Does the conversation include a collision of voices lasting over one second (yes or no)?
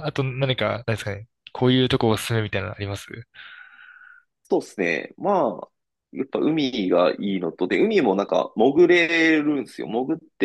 no